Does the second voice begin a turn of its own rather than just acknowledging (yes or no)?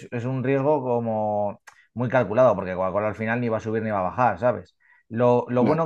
no